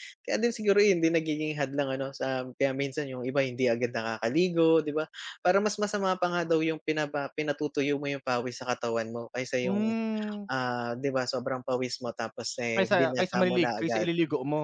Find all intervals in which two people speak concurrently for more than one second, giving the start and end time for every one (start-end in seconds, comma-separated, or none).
12.7-14.1